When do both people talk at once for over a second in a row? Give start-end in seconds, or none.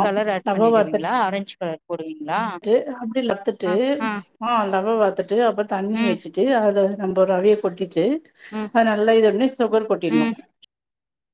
none